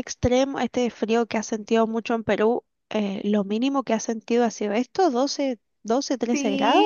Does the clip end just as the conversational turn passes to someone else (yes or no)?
yes